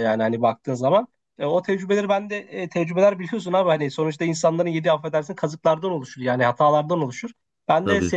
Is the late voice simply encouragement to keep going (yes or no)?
yes